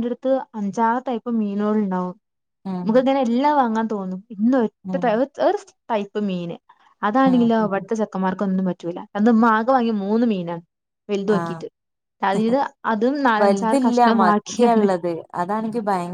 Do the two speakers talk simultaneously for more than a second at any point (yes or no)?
yes